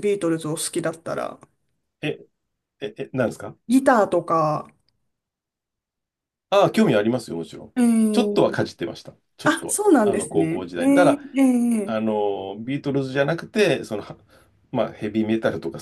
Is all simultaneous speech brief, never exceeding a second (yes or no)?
no